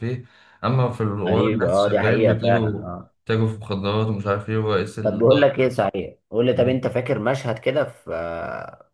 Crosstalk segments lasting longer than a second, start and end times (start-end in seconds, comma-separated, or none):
1.3-3.1